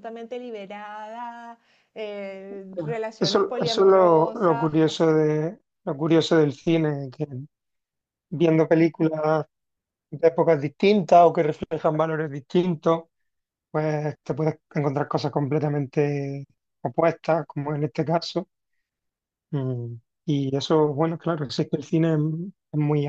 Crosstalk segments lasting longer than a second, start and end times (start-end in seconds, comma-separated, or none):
3.2-5.2